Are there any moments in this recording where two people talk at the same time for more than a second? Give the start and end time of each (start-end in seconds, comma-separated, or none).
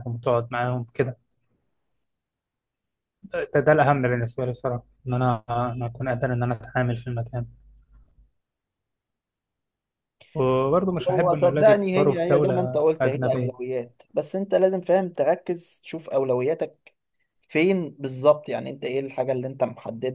11.1-13.5